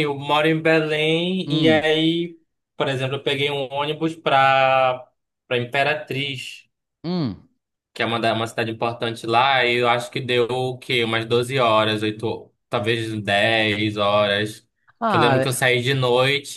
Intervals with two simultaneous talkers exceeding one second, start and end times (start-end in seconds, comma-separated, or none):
none